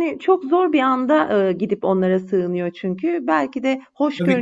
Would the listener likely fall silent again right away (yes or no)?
yes